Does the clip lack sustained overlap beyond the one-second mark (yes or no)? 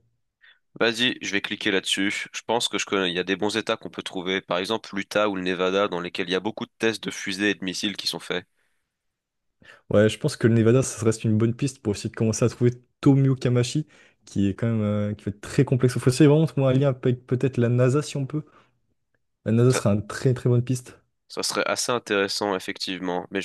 yes